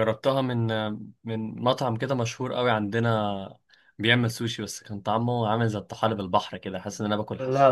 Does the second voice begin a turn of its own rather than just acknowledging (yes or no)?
yes